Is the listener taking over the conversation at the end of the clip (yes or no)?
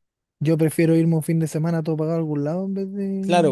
yes